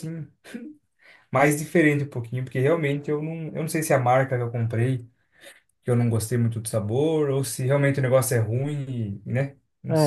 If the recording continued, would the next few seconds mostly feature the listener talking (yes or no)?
yes